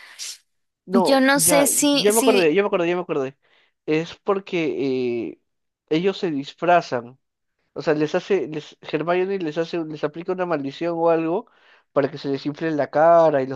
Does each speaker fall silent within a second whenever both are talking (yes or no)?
no